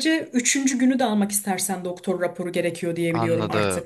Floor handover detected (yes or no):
yes